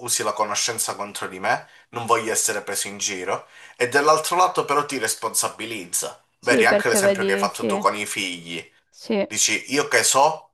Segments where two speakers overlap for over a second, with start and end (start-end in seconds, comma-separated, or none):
6.4-7.7